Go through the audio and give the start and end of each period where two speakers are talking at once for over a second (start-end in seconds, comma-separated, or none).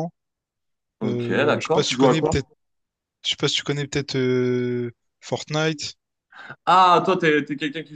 1.1-2.4